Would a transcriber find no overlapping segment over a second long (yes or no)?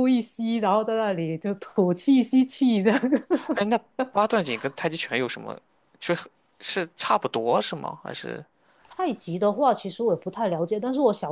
yes